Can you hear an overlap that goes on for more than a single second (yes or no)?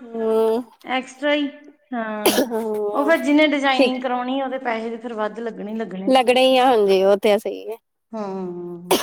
no